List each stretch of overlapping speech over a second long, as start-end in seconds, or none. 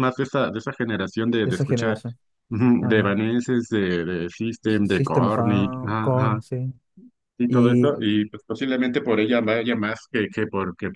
4.7-6.4